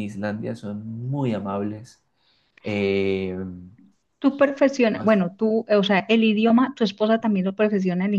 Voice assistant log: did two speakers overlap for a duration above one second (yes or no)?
no